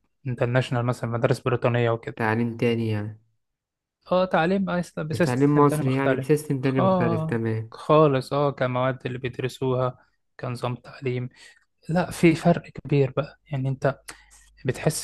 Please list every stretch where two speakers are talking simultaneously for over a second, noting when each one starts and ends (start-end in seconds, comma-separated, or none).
5.1-7.7